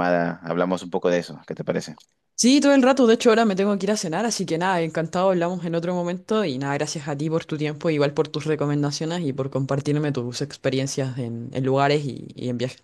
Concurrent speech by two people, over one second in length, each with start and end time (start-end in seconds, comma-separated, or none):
none